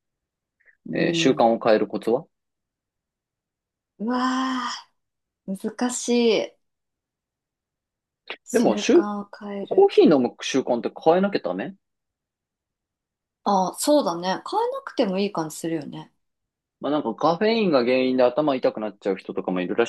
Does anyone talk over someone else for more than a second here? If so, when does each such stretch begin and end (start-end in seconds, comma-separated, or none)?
none